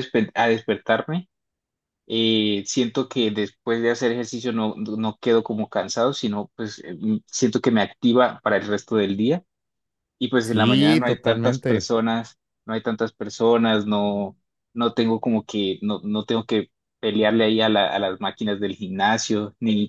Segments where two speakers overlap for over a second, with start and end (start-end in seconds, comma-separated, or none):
10.4-11.9